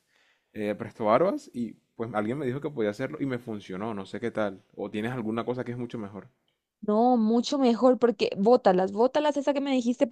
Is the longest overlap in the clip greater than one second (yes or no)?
no